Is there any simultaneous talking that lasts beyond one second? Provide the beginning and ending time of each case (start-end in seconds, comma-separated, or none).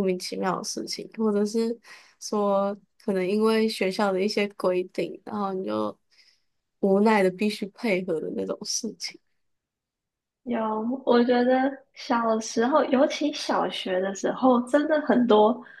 none